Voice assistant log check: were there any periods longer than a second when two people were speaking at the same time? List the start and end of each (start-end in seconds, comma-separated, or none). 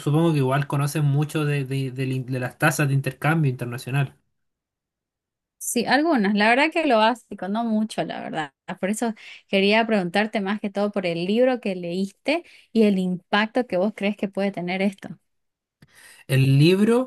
none